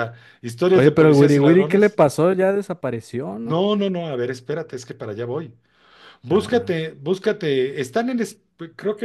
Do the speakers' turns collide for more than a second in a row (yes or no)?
yes